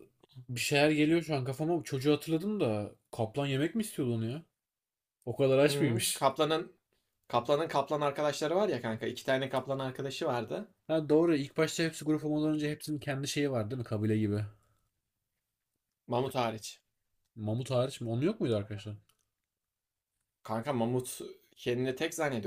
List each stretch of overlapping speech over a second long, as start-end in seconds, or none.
none